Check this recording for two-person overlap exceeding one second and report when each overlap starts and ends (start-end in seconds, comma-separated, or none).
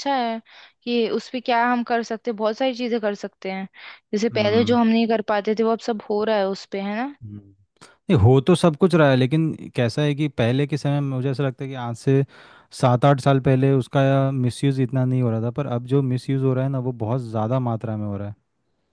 none